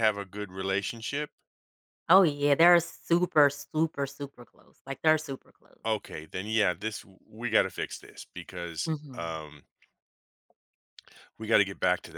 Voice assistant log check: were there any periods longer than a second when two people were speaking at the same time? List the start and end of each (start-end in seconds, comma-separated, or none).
none